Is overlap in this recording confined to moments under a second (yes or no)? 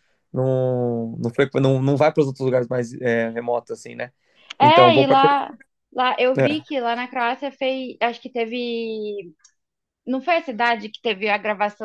yes